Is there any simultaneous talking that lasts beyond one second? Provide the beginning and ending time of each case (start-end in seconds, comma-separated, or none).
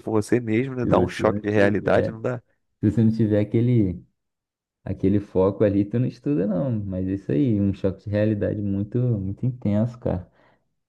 0.8-2.1